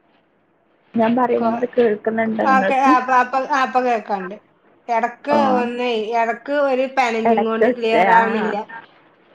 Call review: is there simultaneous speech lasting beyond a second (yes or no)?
yes